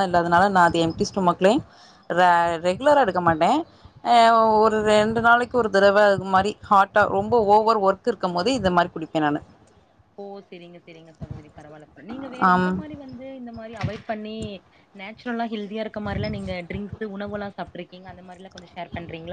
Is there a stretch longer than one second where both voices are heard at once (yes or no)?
no